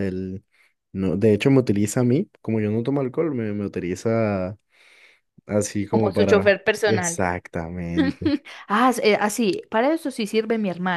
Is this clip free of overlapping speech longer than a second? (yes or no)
no